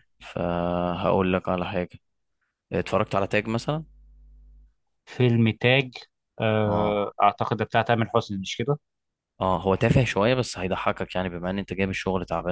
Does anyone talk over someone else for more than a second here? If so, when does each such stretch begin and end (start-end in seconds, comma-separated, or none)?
none